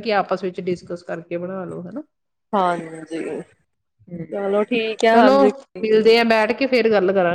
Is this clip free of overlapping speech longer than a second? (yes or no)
yes